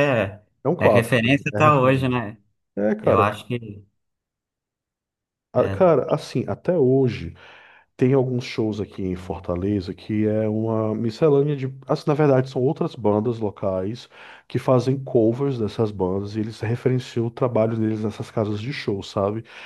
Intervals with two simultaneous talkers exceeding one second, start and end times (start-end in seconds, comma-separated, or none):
0.8-2.2